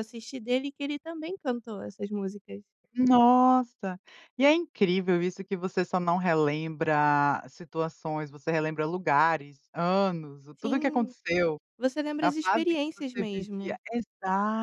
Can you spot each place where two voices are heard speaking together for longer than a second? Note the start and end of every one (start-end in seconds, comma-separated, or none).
12.2-13.8